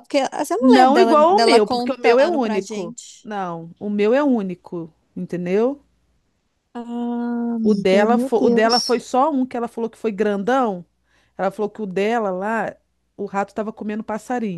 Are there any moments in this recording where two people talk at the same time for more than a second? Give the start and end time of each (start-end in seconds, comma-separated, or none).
0.6-3.3, 7.6-9.0